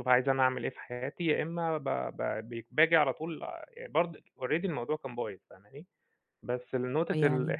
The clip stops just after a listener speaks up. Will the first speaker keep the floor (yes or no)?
yes